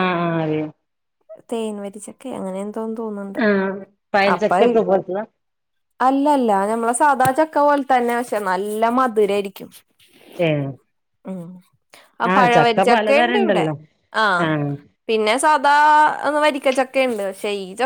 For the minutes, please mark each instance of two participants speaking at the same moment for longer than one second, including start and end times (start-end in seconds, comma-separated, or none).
12.3-13.7